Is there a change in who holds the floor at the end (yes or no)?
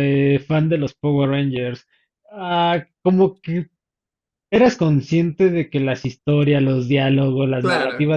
no